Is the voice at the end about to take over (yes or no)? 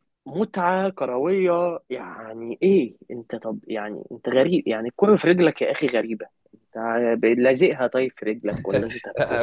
yes